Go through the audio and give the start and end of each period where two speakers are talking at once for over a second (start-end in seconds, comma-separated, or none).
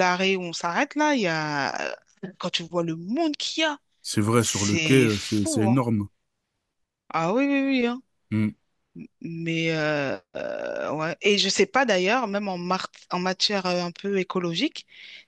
4.4-5.8